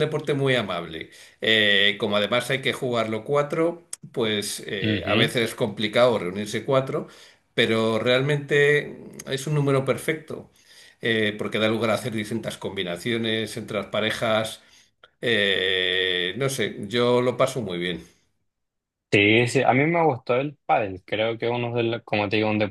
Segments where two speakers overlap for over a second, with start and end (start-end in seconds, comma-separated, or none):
none